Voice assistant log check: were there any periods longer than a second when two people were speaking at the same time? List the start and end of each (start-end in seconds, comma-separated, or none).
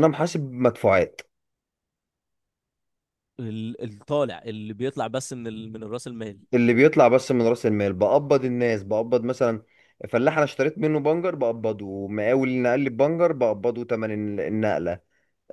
none